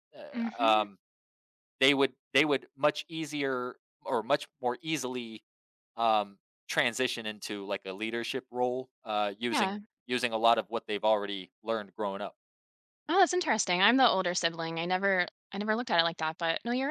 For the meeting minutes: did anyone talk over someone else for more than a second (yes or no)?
no